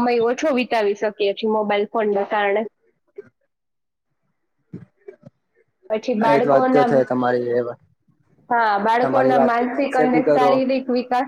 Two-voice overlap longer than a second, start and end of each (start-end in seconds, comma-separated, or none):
9.0-10.5